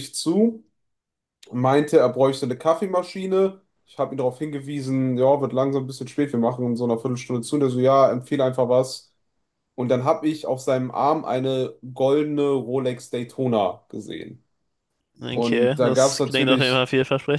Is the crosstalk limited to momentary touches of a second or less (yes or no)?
no